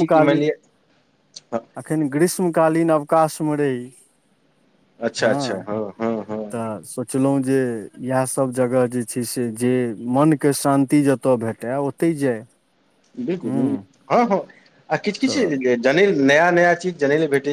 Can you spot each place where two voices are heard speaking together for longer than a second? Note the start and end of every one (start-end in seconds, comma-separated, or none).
none